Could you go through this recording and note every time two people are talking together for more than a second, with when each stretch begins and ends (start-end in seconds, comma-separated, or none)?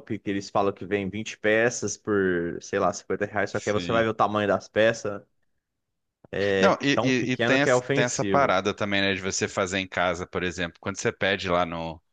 6.9-8.6